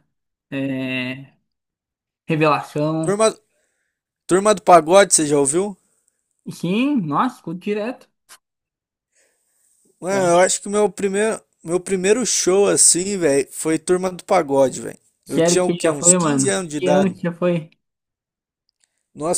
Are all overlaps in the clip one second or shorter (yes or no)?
no